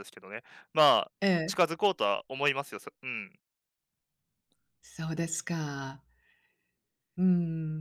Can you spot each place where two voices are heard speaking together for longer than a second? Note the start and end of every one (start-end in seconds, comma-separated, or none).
none